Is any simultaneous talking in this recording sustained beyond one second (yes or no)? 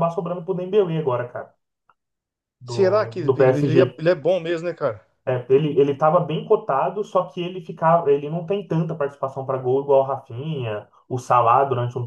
yes